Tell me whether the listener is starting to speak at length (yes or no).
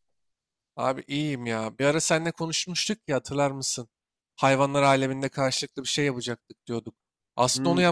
no